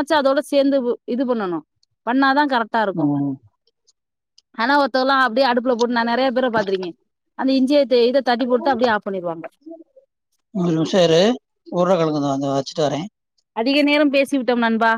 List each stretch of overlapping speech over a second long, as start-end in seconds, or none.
none